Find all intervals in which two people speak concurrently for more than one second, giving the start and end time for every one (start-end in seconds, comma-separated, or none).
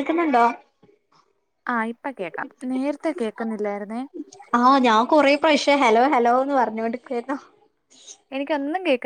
none